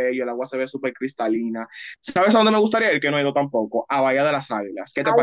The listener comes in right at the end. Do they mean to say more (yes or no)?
yes